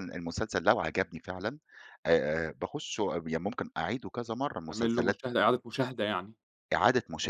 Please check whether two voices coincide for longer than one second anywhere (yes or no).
no